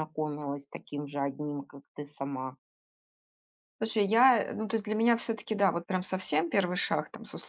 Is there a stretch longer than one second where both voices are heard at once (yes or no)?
no